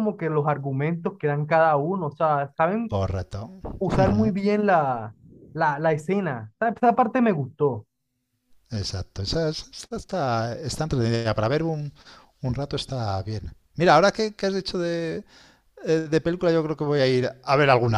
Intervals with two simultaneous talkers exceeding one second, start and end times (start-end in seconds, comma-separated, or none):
none